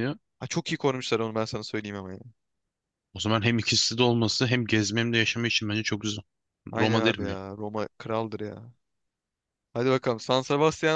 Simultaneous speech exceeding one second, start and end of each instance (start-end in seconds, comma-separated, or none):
none